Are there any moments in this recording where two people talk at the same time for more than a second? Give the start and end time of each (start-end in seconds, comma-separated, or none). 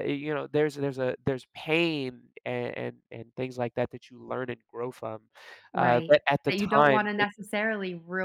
5.7-7.3